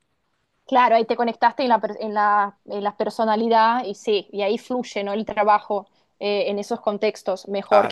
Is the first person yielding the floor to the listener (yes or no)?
no